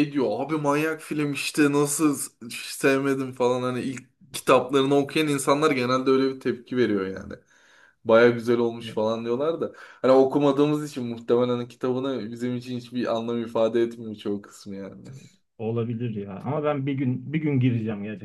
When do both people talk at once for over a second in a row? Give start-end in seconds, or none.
none